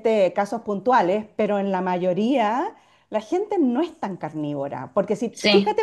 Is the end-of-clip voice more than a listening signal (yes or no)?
no